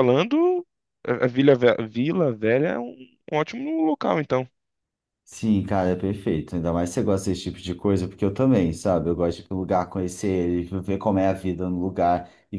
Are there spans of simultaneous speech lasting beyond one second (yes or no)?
no